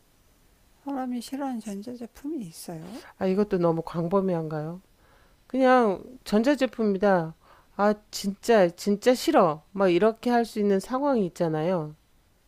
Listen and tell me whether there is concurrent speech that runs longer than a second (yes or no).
no